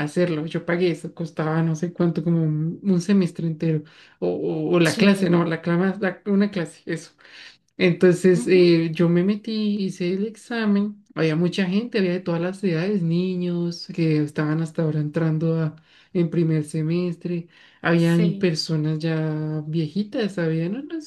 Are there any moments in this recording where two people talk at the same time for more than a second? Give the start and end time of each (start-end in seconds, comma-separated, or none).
none